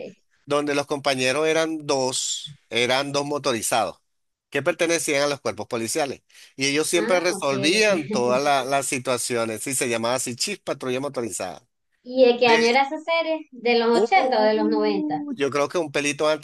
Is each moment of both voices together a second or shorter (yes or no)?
no